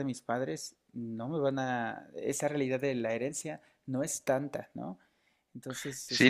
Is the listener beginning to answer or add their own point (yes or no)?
yes